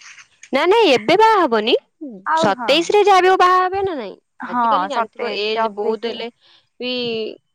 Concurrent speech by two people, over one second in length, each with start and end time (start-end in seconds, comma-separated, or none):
4.5-6.2